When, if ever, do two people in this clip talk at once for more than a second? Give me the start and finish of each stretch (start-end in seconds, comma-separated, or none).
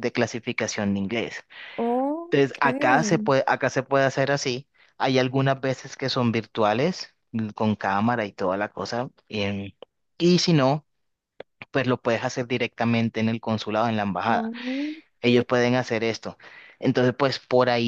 none